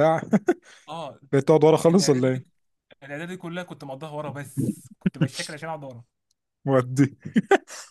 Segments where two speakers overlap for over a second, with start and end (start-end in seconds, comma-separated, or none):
none